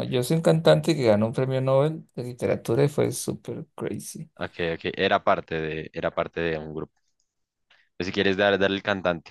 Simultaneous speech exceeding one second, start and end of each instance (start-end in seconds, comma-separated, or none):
none